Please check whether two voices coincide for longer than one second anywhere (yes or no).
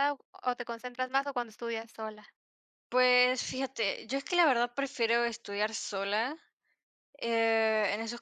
no